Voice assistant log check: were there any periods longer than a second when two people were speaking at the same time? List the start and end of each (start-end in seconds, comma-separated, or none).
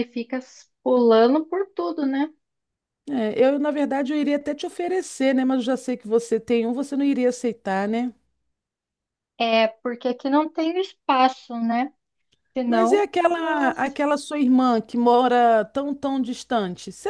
12.7-14.0